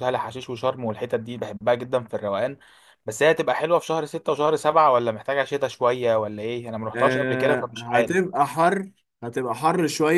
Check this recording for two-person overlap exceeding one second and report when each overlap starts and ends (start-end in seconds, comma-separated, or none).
7.0-8.2